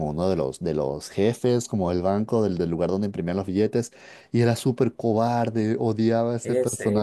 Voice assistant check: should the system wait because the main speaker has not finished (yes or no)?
no